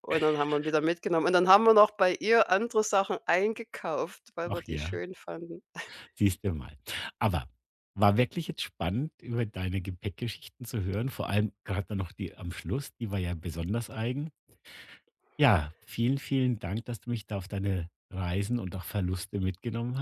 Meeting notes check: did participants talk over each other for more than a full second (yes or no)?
no